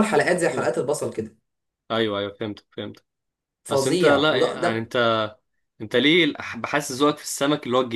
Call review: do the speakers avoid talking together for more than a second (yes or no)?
no